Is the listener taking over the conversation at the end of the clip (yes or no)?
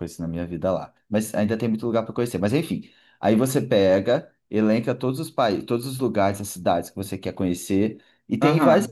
no